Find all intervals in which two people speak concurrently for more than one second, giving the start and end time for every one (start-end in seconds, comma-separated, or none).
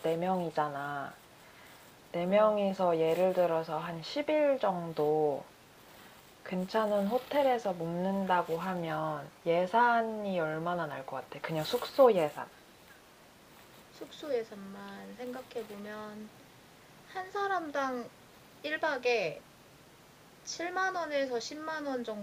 none